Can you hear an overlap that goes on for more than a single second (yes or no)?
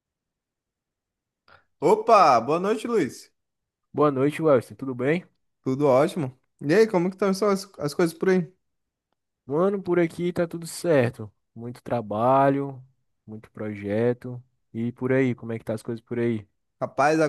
no